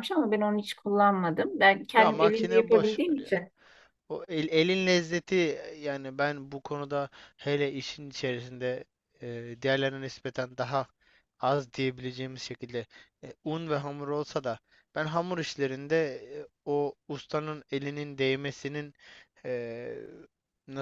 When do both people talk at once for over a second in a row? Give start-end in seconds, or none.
1.9-3.3